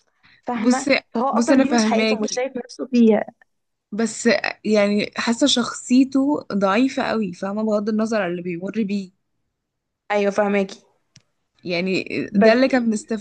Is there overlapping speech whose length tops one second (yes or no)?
yes